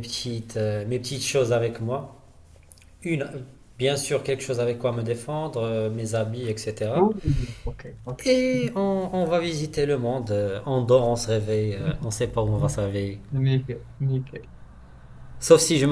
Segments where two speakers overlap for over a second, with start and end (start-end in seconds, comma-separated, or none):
none